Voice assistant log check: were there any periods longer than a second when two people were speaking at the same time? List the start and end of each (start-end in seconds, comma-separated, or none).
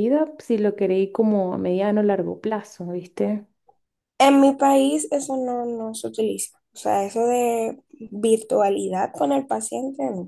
none